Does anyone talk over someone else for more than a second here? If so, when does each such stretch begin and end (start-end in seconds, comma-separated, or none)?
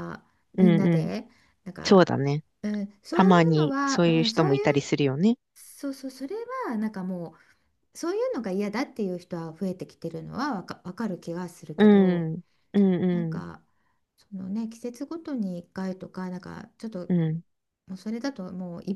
3.1-4.9